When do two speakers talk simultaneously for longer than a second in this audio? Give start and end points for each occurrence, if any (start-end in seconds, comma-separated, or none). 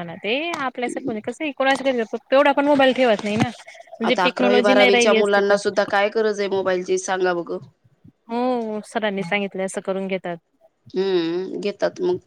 4.1-5.6